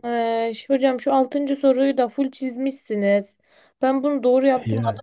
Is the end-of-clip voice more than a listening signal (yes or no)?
no